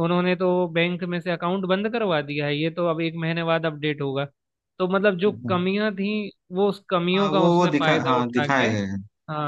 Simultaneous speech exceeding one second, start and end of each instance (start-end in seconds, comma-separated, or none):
7.1-8.7